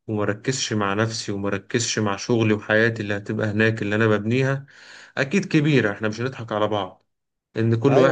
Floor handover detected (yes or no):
yes